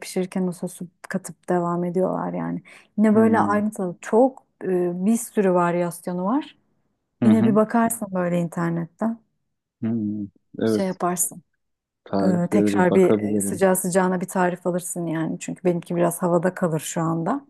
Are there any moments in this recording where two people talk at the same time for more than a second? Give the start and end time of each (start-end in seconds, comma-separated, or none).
12.2-13.6